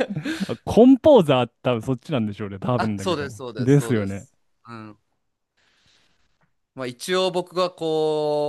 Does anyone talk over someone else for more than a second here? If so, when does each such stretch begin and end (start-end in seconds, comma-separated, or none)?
2.8-4.3